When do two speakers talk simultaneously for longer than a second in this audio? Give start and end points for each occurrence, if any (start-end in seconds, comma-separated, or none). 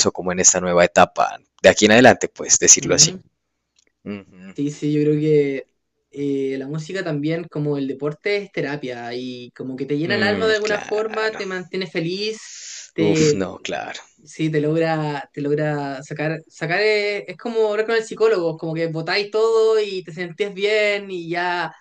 10.0-11.4